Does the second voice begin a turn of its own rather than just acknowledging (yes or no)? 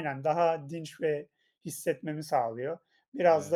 no